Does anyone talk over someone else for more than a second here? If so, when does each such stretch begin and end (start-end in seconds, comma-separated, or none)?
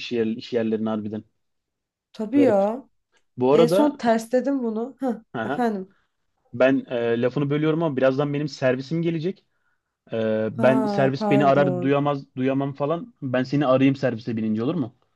10.6-12.0